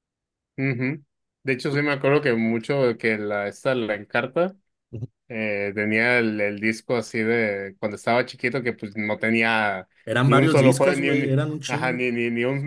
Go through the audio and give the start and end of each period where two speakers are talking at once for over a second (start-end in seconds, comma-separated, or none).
10.2-12.0